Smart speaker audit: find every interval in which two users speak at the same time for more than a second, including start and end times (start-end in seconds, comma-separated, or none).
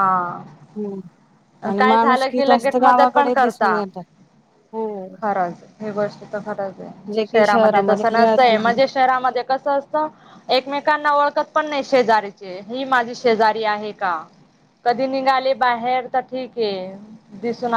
2.5-3.8